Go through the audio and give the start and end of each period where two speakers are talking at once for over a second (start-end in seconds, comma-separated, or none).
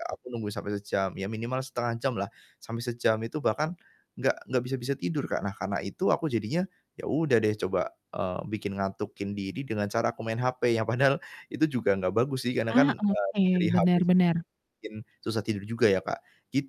12.7-14.3